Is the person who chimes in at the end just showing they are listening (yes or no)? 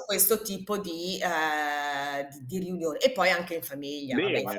no